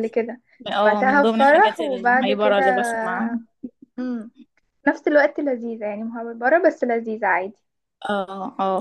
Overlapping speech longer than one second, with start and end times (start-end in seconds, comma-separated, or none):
0.8-2.6